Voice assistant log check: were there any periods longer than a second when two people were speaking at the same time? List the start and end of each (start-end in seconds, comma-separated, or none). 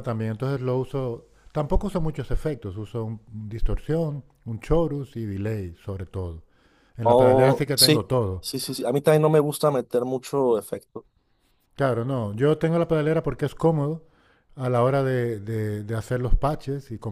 7.0-8.4